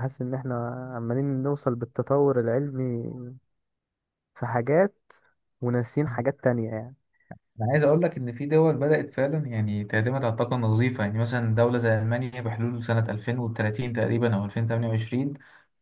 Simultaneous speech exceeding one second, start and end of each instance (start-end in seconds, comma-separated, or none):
none